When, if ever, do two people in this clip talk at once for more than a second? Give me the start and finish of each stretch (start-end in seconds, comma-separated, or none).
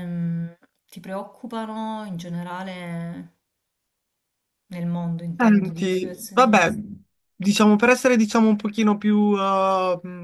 5.4-6.7